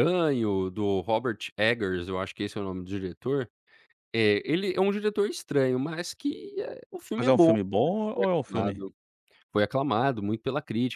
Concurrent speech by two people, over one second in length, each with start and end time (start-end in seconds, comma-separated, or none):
7.2-8.8